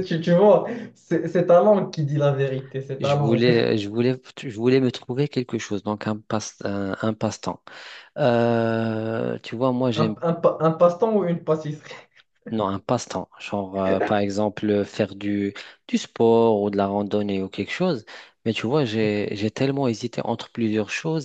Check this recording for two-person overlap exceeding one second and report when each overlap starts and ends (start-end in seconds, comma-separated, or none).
none